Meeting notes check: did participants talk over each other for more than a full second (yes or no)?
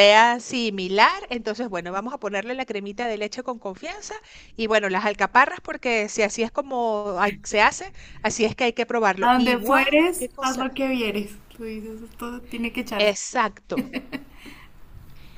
yes